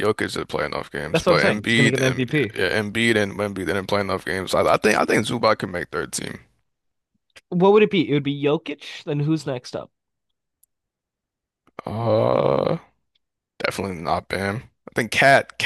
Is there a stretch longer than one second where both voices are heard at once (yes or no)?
yes